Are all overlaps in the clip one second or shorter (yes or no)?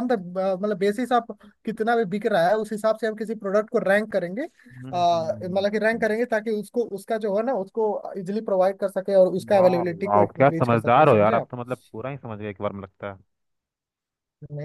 no